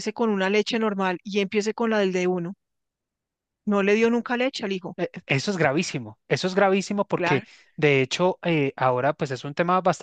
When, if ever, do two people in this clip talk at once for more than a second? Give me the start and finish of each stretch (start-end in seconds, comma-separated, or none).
none